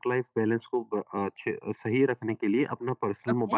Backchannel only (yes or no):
yes